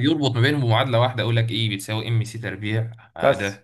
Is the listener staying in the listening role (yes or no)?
no